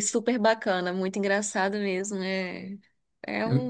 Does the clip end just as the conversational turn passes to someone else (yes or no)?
no